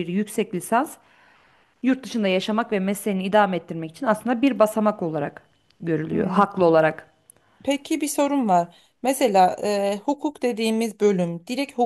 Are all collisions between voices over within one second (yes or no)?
yes